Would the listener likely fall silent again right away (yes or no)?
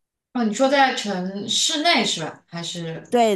no